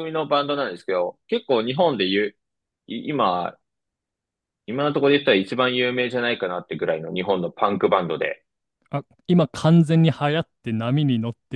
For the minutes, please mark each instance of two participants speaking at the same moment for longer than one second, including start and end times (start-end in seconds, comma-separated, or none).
none